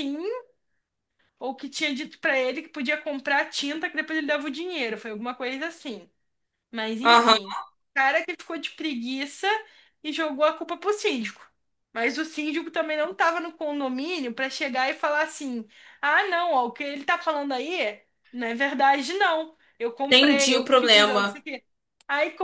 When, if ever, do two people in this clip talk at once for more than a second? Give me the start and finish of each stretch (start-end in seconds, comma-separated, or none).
20.1-21.4